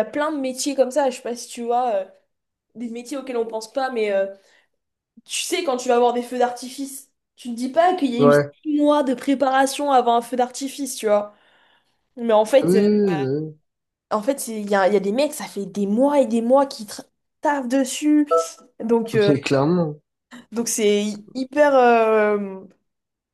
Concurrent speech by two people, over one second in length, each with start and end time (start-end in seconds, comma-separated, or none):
none